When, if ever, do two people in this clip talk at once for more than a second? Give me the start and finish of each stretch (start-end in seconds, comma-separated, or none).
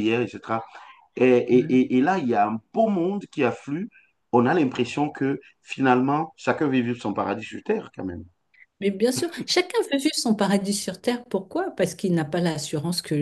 none